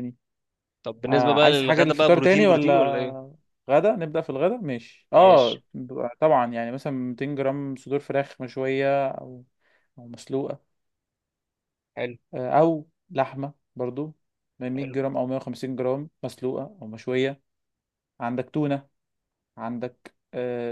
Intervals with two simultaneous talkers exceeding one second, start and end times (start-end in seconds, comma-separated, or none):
1.0-3.3